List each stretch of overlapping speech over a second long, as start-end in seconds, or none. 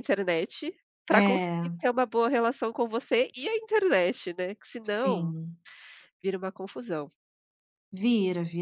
none